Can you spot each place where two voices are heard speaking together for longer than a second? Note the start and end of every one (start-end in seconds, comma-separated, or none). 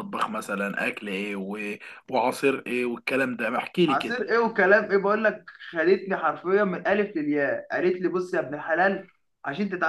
none